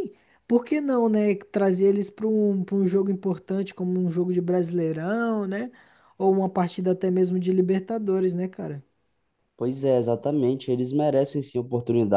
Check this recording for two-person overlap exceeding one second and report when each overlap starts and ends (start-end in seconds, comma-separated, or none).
none